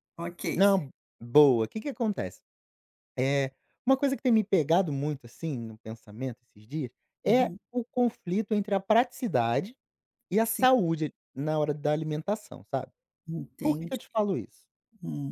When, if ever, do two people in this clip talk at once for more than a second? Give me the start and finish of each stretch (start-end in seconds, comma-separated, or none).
none